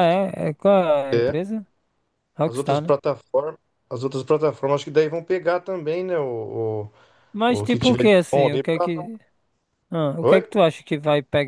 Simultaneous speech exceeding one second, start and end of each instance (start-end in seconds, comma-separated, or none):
7.5-8.9